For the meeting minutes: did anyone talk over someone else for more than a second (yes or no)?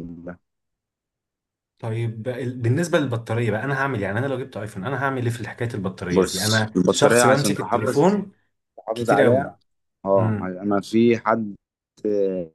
yes